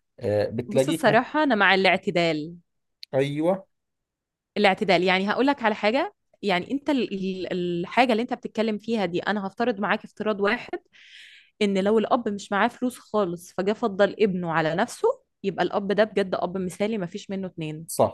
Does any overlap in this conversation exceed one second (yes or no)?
no